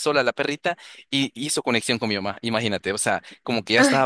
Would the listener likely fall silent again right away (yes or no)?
yes